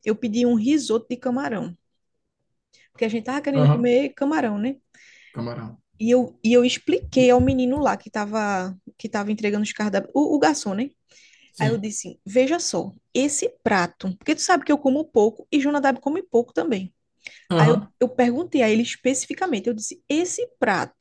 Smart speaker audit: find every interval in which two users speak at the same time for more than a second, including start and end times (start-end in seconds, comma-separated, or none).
none